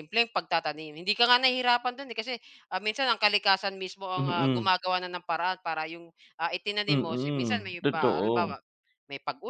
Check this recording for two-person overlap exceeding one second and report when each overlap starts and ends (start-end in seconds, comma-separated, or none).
6.9-8.6